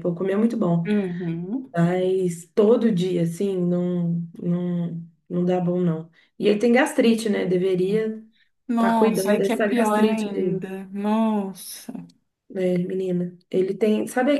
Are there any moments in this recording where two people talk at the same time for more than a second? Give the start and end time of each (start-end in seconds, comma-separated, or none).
8.7-10.7